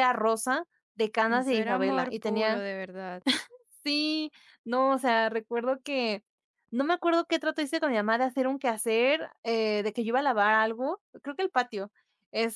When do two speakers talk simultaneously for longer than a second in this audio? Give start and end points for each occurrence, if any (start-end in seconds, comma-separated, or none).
1.3-2.6